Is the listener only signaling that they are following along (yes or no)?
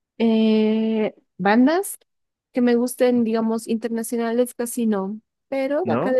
yes